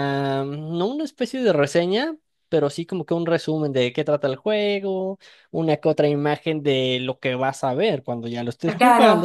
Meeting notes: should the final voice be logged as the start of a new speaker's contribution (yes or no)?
yes